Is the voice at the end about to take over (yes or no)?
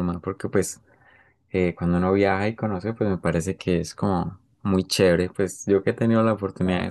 no